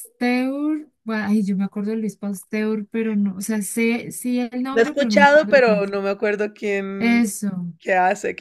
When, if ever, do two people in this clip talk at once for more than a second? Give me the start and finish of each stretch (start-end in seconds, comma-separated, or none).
4.7-5.9